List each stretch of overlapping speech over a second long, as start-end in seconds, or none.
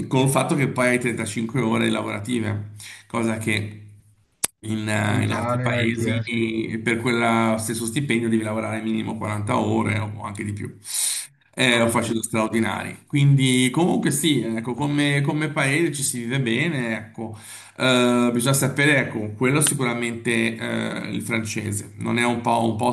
5.1-6.5